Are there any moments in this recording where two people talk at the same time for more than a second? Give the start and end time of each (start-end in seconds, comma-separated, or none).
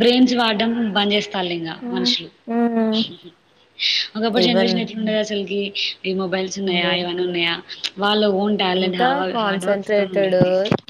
8.8-10.4